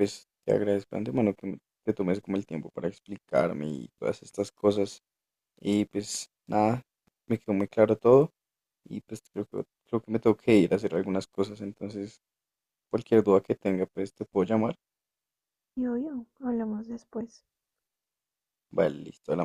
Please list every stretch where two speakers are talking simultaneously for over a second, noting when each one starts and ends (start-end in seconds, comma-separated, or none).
none